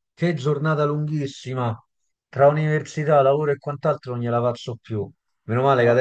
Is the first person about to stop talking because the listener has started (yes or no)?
no